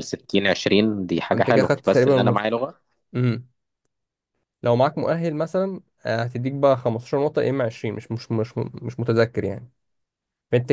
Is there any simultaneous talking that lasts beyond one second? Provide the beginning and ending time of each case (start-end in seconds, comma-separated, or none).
1.4-2.6